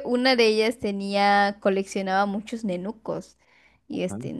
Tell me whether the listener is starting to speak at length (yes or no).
no